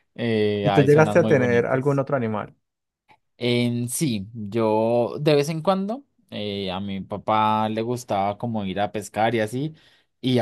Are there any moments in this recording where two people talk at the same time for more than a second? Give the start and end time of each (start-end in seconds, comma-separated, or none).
0.6-2.0